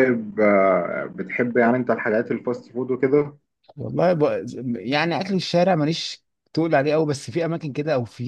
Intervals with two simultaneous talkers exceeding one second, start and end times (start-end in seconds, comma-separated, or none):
none